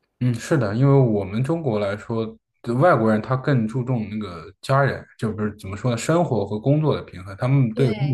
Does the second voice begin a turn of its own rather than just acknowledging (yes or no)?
no